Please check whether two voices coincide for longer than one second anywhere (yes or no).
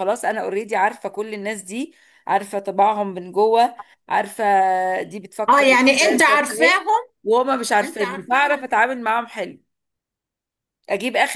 yes